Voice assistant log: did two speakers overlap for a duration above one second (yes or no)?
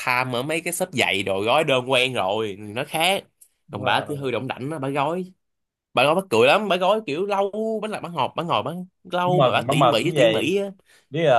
yes